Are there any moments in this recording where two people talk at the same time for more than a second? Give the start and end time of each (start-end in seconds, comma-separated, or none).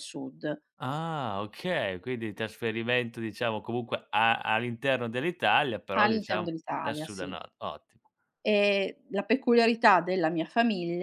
6.0-7.4